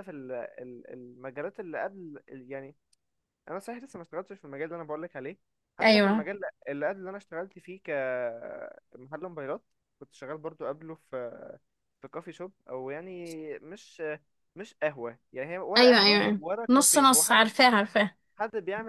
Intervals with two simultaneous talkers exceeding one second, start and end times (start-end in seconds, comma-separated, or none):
15.8-17.5